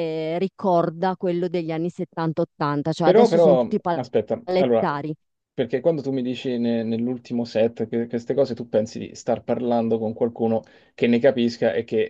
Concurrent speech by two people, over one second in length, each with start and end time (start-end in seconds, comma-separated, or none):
3.0-4.8